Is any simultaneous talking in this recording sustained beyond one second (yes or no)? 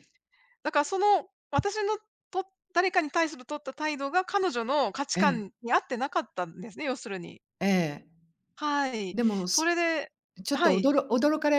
no